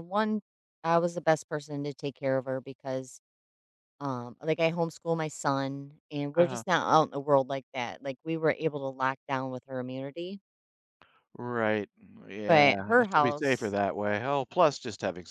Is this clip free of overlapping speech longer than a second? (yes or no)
no